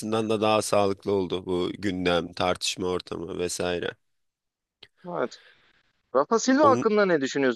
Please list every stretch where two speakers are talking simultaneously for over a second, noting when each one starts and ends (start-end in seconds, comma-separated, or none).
none